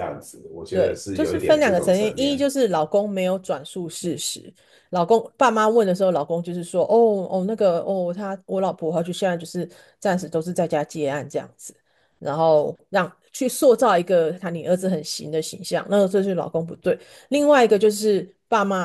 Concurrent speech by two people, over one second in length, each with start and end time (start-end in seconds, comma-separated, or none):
0.7-2.5